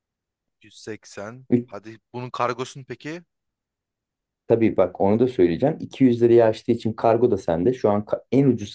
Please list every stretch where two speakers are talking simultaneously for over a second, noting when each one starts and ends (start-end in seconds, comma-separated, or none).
none